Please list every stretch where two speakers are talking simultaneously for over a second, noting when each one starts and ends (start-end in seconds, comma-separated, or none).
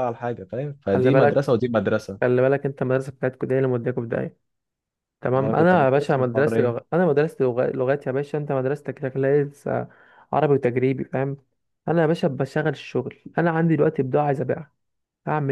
5.4-6.8